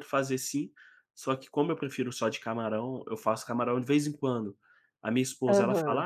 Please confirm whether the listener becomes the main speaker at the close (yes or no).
no